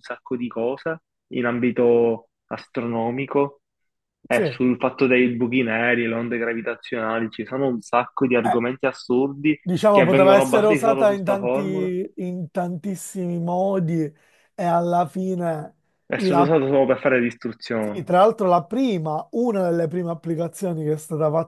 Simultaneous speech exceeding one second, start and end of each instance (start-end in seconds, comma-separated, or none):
9.6-11.9